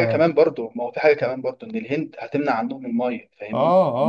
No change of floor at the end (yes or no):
no